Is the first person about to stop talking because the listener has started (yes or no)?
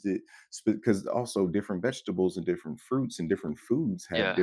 no